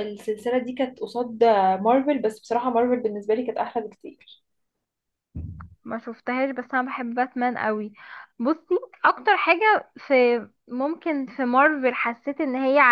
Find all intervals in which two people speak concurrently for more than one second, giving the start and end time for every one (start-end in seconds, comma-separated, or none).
none